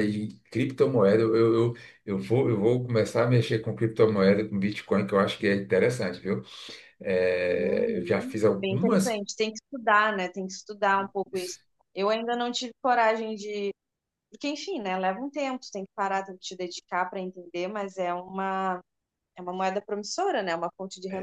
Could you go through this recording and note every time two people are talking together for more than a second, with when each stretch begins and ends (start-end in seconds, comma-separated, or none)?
7.5-9.2